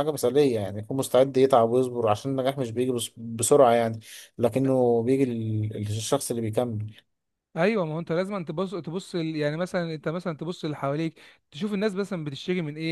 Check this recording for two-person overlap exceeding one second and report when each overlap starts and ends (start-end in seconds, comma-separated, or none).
none